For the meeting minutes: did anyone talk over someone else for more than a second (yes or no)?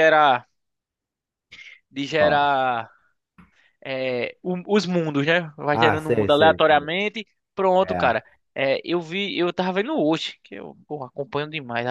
yes